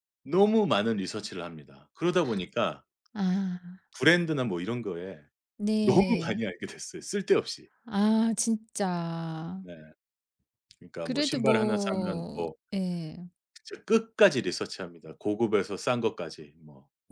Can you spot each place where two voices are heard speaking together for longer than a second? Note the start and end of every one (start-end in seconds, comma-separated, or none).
11.0-12.5